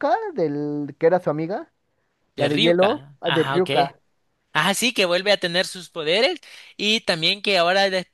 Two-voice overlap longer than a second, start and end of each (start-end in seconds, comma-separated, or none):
2.4-3.7